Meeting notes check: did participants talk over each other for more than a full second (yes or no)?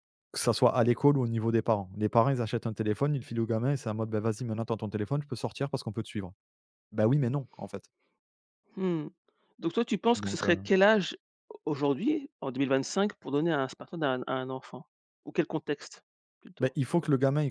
no